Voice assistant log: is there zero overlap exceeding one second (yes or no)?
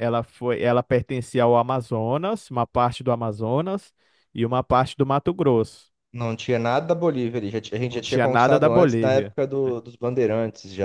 no